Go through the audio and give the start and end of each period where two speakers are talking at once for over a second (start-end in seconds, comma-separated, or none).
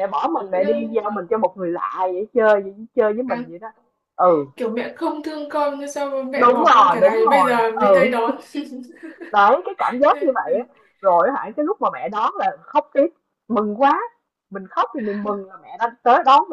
6.3-8.2